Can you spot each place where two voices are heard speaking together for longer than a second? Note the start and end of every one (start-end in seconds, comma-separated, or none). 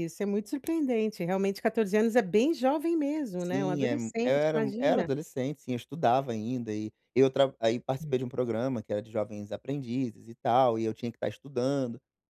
3.4-5.1